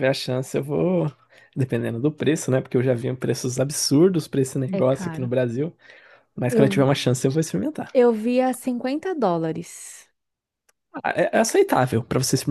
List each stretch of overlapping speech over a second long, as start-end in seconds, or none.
none